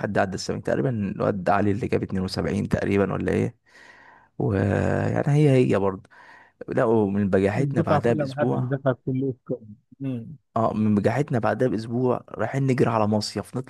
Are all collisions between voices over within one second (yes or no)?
no